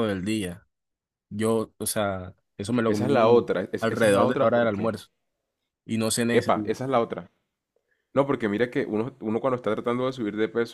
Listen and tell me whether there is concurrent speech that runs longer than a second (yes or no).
yes